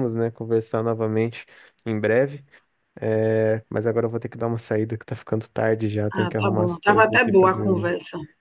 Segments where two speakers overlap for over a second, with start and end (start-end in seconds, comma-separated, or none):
6.2-7.9